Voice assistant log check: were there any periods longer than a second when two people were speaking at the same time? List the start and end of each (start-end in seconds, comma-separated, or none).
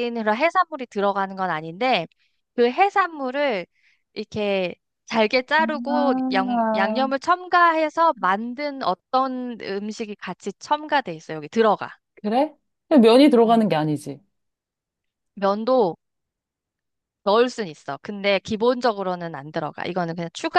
5.7-7.1